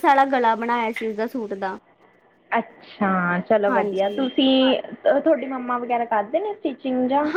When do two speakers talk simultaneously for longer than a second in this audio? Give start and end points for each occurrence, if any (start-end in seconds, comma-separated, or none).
none